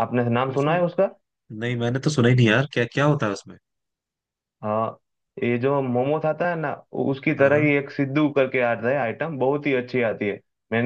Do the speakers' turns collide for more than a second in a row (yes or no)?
no